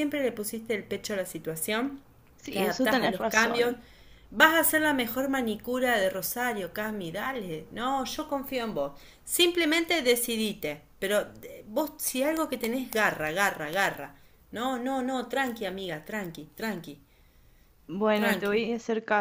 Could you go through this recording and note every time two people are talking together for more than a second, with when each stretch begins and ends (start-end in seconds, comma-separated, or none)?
2.5-3.7